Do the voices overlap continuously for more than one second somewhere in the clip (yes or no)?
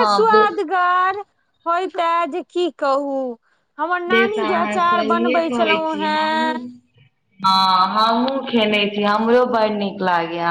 yes